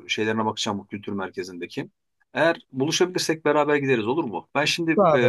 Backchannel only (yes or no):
yes